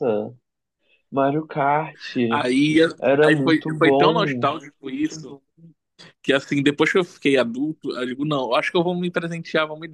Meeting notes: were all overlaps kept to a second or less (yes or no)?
no